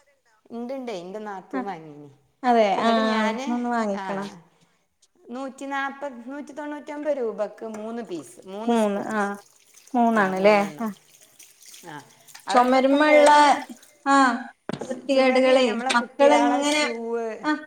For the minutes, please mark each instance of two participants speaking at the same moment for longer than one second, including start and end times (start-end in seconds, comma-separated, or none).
15.1-16.8